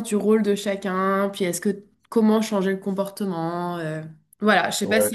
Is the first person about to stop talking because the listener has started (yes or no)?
yes